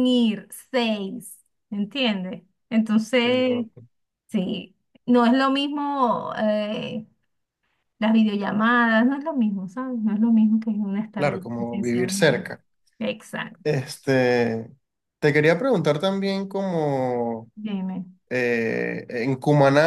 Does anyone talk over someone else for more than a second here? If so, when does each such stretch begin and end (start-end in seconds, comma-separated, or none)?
11.2-12.5